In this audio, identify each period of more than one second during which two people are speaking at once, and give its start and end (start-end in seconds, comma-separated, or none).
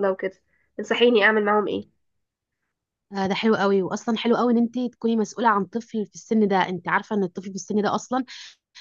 none